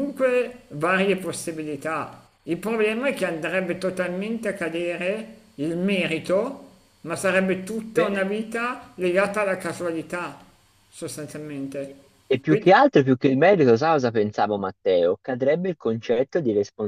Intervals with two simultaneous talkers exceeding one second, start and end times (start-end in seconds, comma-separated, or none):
none